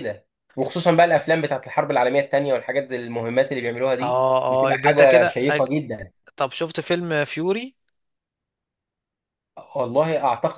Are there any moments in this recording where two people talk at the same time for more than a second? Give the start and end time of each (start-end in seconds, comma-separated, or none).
4.0-5.7